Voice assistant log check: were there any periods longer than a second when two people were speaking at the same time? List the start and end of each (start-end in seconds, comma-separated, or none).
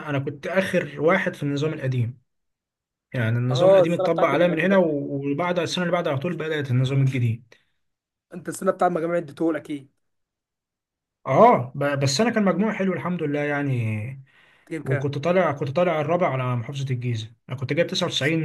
3.5-4.8